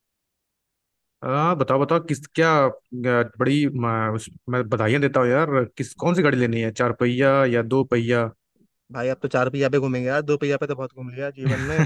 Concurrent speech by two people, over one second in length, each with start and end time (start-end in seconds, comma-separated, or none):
none